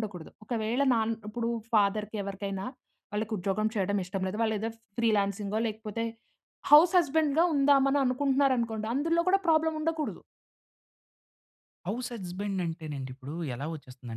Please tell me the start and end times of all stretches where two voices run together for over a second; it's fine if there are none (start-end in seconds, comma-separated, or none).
none